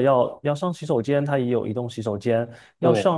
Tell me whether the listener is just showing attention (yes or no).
yes